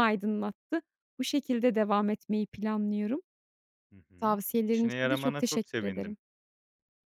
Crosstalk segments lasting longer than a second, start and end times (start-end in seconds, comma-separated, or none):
4.2-6.2